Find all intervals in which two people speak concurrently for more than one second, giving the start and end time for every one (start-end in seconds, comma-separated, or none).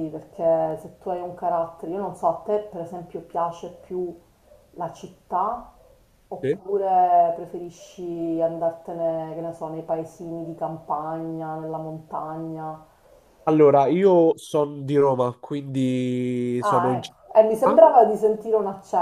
16.6-17.8